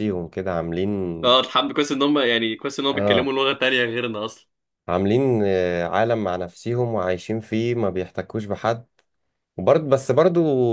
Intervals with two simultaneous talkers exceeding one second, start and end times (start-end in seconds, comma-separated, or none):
none